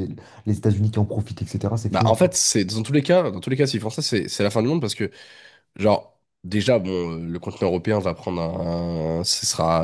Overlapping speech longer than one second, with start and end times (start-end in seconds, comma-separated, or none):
none